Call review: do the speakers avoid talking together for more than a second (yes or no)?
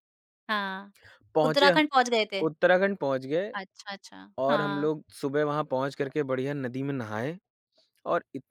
yes